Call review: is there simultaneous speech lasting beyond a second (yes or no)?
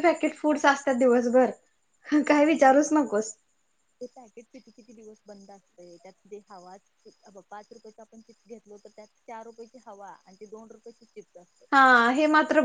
no